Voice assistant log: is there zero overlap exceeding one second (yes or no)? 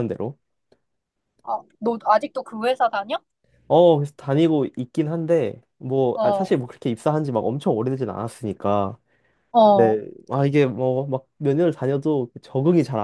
yes